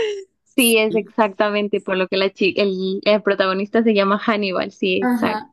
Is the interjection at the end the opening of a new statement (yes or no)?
yes